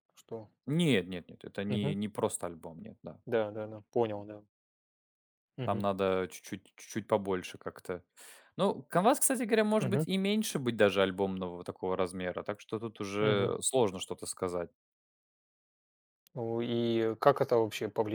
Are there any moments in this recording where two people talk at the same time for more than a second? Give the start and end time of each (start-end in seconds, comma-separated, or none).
none